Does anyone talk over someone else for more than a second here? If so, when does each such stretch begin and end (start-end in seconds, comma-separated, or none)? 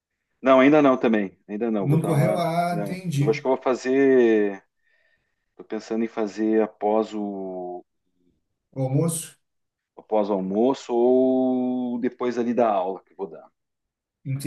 1.8-3.4